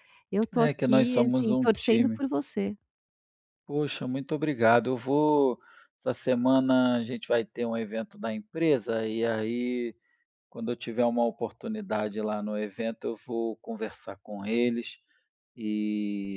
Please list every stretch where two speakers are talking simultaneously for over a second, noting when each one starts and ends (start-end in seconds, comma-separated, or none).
0.6-2.2